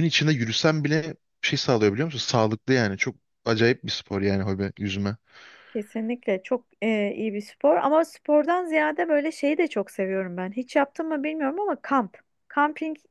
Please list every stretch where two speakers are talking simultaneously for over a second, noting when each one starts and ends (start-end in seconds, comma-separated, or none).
none